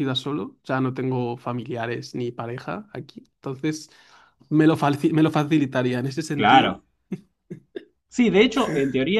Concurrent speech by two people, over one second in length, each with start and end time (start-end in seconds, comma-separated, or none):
none